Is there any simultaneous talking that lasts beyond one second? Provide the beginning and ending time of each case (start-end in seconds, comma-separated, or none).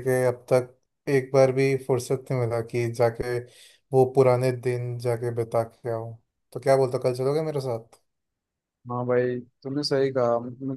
none